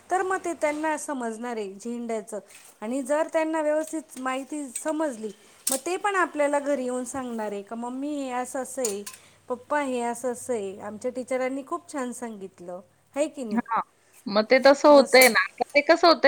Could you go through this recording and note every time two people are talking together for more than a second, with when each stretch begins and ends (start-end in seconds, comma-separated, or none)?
none